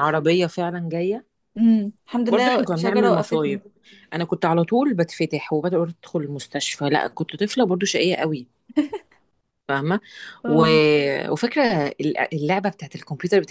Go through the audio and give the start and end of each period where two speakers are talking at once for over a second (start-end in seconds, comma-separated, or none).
2.3-3.6